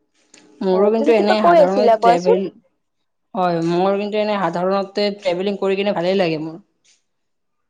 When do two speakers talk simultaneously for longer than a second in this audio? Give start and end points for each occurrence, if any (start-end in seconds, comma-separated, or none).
0.7-2.4